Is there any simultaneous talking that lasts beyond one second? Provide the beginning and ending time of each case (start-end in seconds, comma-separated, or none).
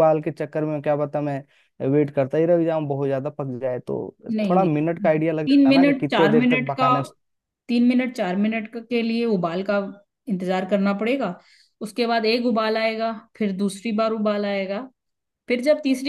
5.5-6.9